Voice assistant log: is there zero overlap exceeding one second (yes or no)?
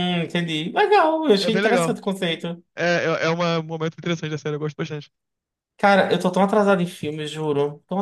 yes